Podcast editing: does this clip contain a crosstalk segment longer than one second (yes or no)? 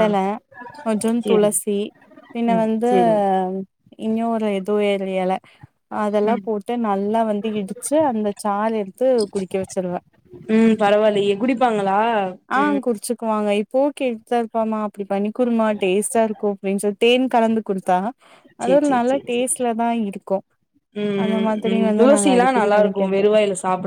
no